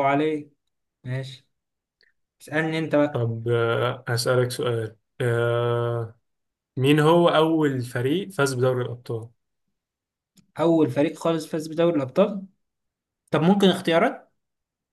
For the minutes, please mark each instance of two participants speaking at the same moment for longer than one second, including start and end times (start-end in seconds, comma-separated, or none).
none